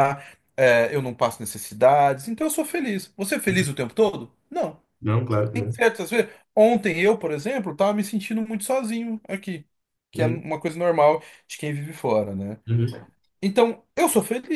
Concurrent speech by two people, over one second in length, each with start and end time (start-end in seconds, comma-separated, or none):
none